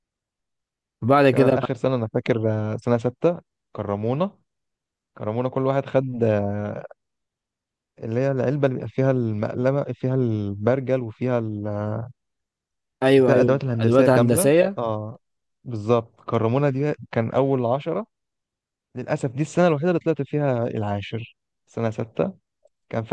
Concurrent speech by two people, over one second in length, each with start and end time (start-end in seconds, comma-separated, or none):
13.2-14.8